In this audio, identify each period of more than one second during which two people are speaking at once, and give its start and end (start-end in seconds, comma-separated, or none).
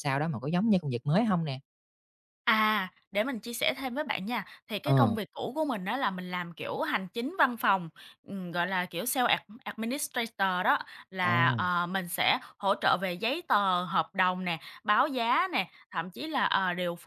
none